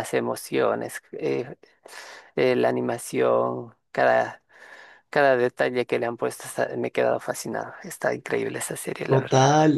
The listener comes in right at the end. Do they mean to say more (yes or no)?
yes